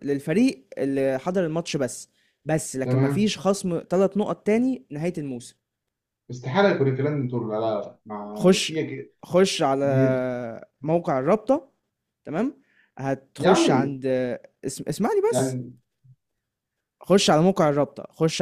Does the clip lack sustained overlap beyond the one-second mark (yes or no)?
yes